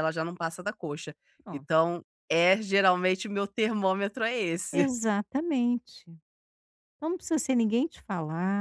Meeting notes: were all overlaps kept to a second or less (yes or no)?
yes